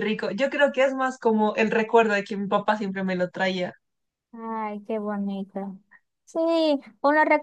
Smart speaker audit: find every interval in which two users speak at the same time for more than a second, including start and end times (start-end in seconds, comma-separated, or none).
none